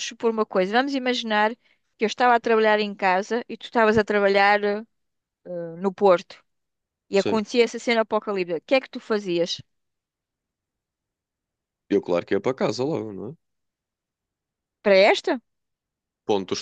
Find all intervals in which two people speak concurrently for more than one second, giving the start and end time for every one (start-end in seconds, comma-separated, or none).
none